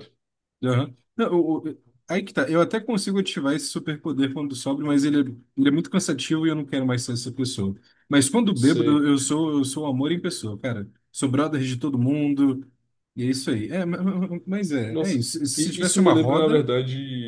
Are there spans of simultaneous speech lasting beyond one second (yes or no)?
yes